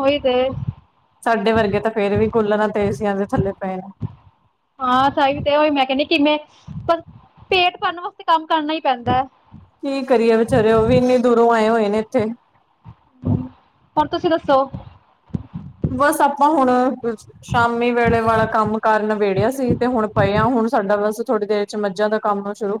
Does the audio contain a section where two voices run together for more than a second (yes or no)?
no